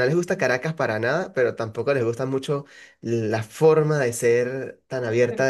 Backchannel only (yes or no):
yes